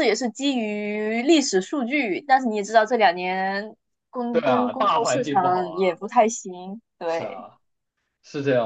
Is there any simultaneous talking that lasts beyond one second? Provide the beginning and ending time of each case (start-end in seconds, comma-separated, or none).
4.3-6.0